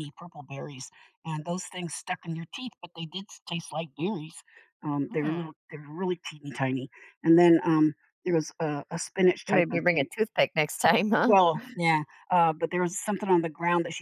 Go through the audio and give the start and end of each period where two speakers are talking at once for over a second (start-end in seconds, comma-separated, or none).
none